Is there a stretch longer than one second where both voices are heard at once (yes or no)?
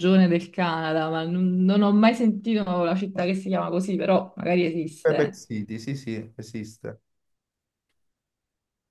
no